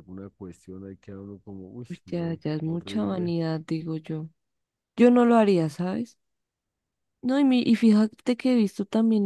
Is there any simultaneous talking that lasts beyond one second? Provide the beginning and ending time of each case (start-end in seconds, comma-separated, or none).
1.9-3.3